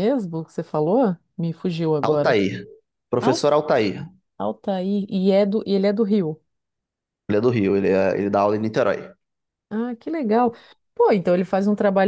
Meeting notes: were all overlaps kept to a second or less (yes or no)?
yes